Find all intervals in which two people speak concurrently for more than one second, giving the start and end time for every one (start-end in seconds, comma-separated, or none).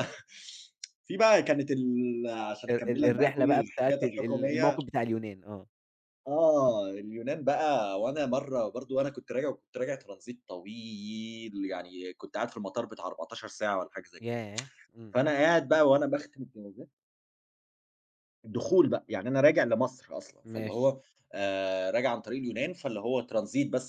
2.7-4.8